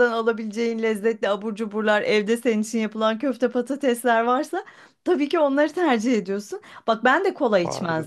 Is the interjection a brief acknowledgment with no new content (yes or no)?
yes